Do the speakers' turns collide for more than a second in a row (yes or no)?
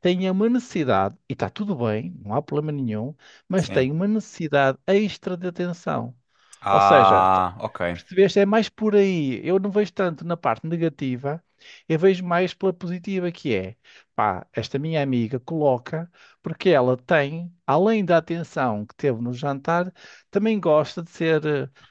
no